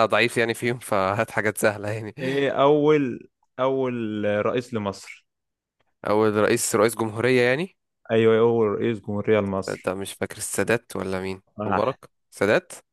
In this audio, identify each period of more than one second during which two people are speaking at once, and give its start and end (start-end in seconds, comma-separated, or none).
none